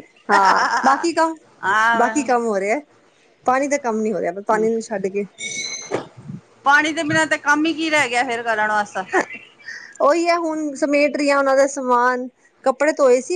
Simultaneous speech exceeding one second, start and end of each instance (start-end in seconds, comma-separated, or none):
none